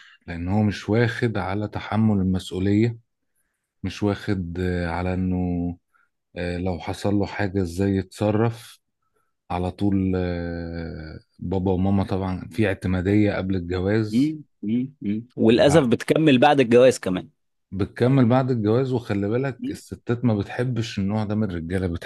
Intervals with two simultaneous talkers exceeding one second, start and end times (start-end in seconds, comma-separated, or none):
none